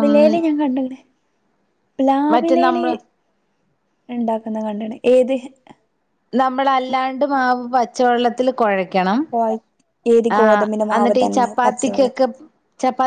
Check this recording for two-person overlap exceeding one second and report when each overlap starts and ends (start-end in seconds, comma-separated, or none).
10.4-12.1